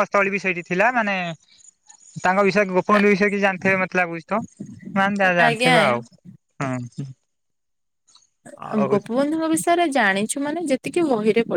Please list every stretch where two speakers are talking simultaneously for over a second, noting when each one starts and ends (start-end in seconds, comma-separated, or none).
none